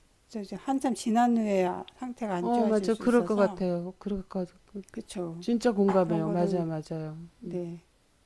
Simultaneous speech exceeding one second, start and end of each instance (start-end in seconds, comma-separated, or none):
2.4-3.6